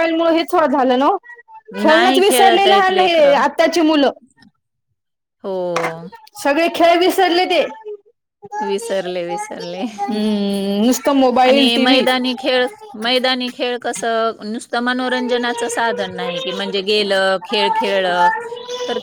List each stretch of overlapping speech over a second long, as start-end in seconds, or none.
1.9-3.4